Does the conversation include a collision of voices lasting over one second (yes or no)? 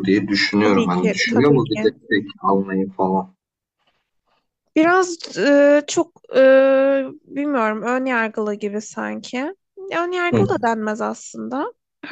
yes